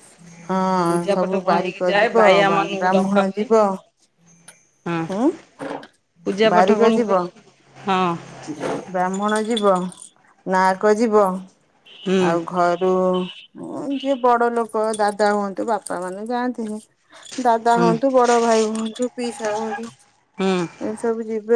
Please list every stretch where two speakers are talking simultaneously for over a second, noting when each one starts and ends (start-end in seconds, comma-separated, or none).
1.1-3.4